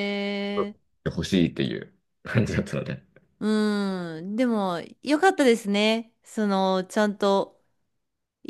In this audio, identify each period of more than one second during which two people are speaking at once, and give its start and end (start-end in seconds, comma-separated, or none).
none